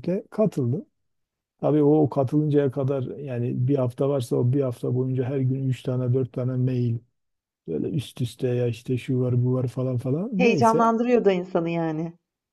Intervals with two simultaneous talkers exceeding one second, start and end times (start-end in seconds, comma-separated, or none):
none